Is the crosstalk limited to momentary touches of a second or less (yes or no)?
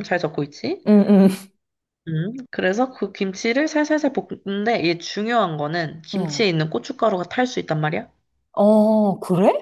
yes